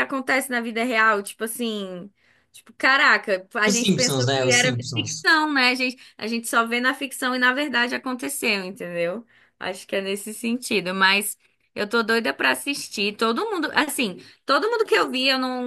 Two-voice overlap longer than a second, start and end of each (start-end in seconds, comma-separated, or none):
3.6-5.2